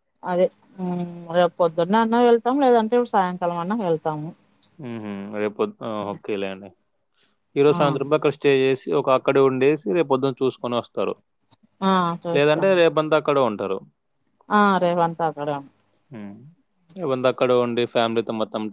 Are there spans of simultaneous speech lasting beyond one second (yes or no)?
no